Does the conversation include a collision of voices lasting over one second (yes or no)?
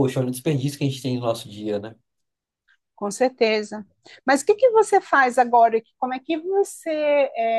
no